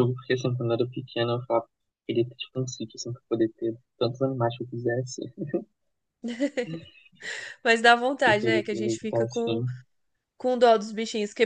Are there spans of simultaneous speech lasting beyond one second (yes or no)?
yes